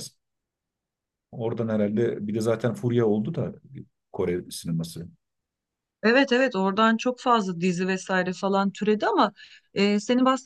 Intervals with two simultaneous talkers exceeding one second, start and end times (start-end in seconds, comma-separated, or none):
none